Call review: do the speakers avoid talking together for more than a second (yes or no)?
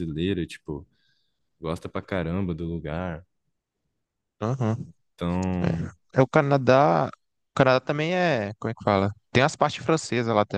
yes